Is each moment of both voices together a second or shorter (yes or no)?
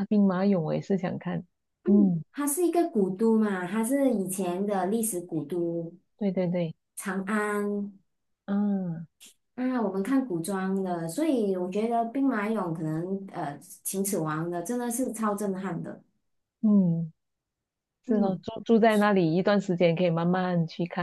yes